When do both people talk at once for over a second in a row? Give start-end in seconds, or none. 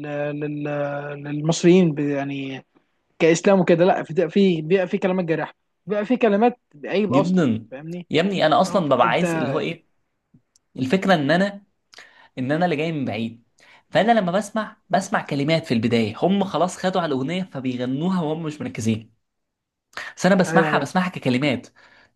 none